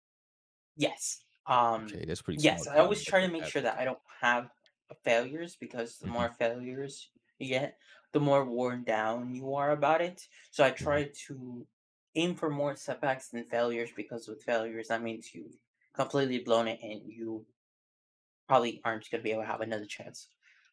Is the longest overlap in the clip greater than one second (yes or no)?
yes